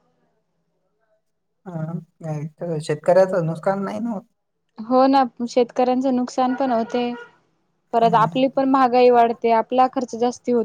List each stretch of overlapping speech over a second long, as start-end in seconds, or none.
none